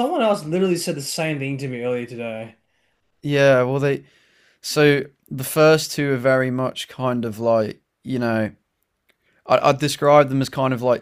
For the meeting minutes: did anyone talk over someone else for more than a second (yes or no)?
no